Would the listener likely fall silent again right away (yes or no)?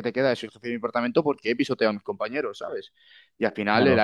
yes